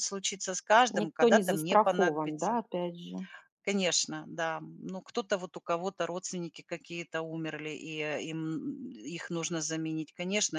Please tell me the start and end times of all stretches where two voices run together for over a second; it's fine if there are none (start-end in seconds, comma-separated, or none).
0.9-2.6